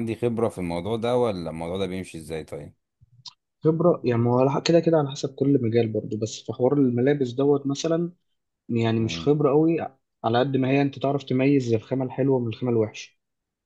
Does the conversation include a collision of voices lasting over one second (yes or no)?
no